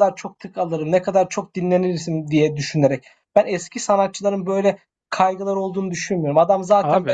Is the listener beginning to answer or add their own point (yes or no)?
no